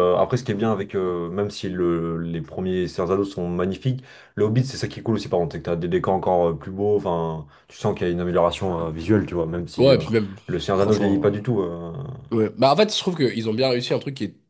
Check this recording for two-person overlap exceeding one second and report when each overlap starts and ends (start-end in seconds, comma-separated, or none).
none